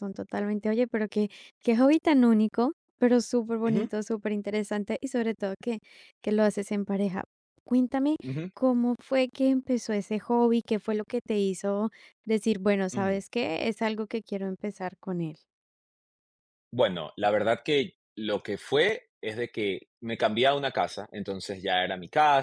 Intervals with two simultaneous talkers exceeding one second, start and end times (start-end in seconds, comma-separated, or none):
none